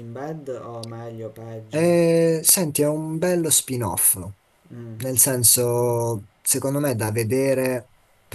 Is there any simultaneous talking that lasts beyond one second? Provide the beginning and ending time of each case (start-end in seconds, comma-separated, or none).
none